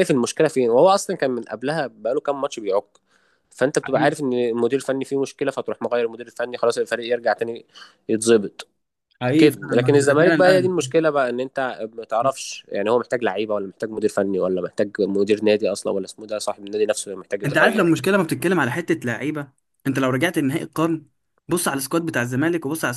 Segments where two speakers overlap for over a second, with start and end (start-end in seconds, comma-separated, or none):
9.4-10.7